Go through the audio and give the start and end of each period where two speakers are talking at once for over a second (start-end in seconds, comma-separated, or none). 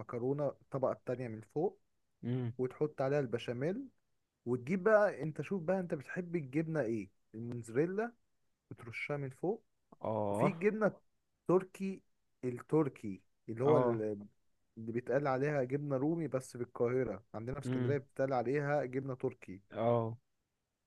none